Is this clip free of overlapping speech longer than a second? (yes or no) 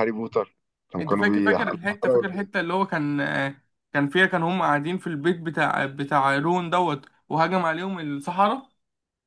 no